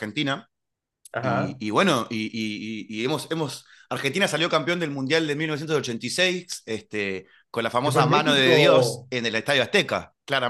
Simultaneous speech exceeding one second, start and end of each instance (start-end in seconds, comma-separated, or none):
7.8-9.1